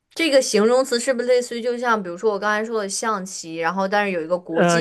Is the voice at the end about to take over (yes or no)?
yes